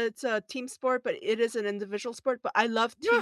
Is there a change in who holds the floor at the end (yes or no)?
no